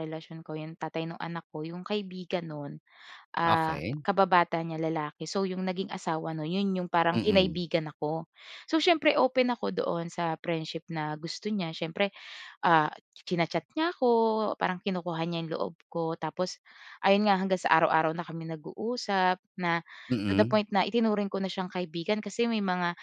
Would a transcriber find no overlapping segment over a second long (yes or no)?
yes